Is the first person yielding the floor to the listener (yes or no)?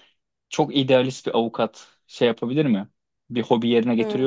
no